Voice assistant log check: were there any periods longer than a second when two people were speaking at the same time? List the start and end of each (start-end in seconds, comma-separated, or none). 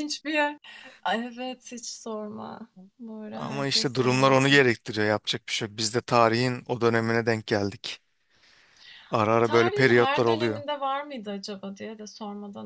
3.3-4.6, 9.4-10.6